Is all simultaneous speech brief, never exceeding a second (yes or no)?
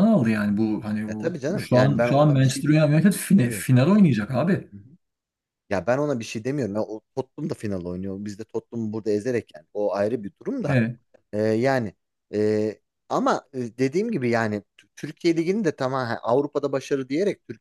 no